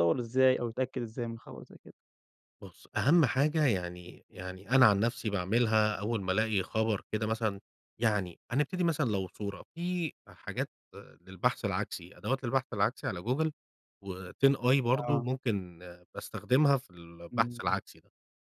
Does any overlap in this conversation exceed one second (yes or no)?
no